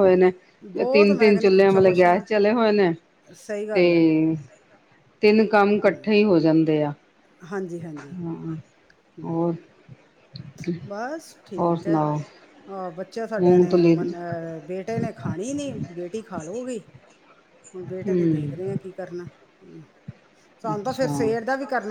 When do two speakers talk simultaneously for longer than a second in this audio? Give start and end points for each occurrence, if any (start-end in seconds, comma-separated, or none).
0.9-2.2